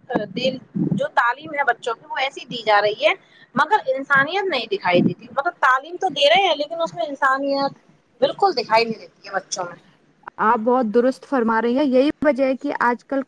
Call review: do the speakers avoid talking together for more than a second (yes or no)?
yes